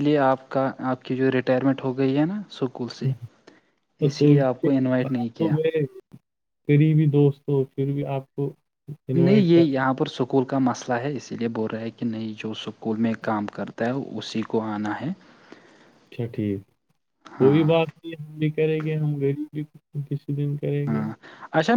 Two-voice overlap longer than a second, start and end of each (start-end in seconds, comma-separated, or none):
4.1-5.5